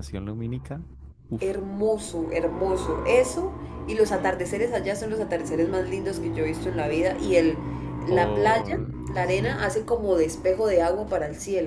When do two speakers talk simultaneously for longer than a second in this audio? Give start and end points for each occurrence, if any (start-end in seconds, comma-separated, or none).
8.1-9.6